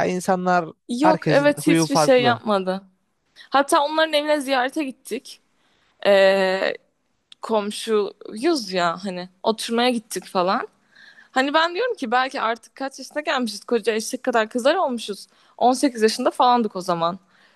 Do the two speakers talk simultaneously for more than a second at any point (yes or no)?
yes